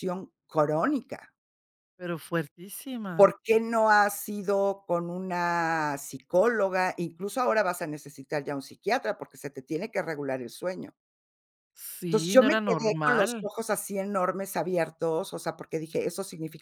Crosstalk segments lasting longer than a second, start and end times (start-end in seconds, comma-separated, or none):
12.1-13.5